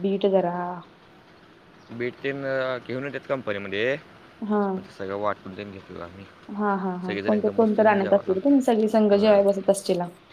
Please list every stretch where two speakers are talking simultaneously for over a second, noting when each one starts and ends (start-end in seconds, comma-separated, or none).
7.0-8.3